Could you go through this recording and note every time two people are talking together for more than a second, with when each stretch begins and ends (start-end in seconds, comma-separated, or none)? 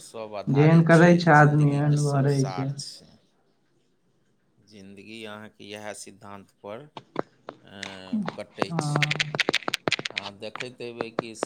0.6-2.4